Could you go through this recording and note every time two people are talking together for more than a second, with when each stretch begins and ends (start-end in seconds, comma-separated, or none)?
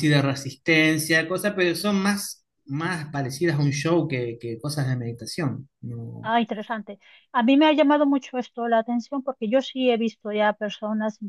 none